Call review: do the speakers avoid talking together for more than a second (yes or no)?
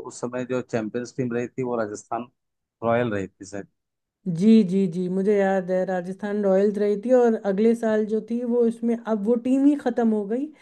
yes